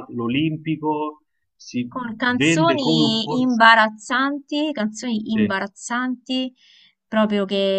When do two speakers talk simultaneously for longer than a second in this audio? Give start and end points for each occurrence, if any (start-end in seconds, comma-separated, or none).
1.9-3.6